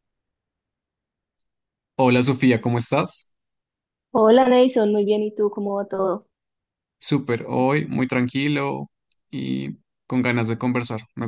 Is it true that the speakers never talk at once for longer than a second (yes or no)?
yes